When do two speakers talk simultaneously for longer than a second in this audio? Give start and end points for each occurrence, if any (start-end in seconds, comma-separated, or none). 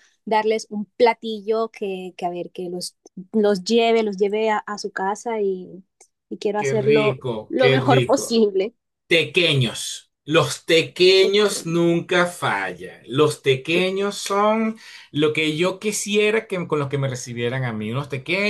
6.5-8.4